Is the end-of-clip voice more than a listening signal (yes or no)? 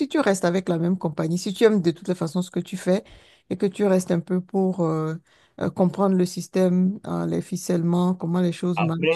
yes